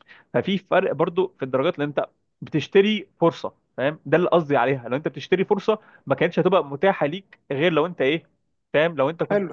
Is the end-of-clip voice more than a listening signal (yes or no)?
yes